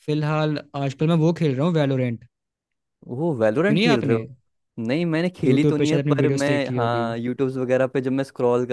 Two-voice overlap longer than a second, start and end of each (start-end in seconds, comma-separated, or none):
5.5-7.1